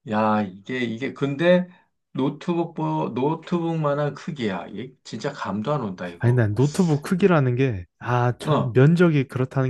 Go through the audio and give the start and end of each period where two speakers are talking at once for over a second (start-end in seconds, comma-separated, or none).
none